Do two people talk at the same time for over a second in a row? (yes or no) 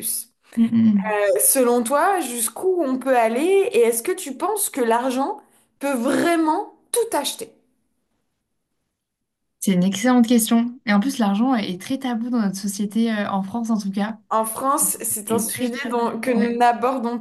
yes